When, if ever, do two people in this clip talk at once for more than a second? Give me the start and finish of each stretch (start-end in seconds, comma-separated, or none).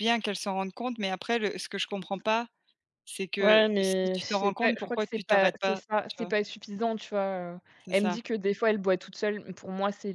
3.4-6.3